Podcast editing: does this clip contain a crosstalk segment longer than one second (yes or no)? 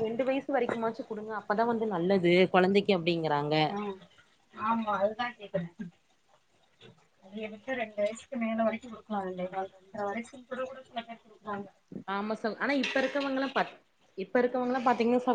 no